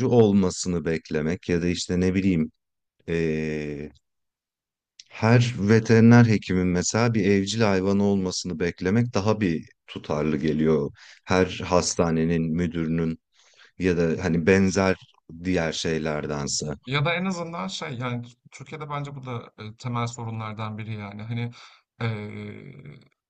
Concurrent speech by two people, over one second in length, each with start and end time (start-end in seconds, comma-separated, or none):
none